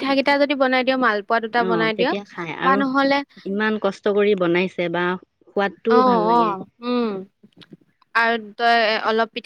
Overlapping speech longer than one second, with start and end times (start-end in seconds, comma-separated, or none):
none